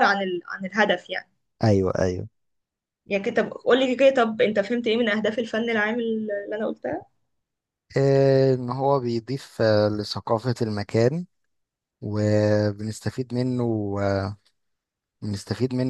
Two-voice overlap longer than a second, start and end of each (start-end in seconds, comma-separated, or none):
none